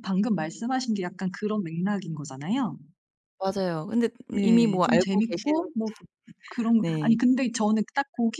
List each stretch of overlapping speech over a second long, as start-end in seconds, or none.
4.3-5.5